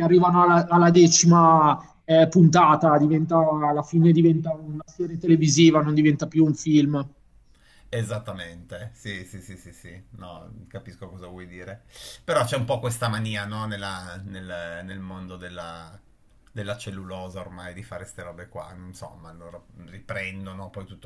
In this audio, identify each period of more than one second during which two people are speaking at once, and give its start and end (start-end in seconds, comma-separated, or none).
none